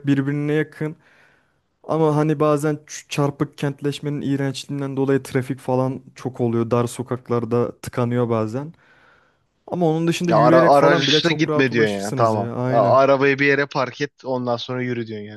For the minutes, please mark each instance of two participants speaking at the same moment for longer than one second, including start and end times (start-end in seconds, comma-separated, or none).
10.3-13.0